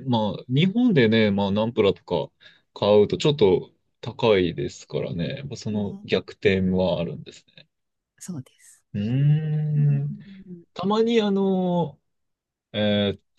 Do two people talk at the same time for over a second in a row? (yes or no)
no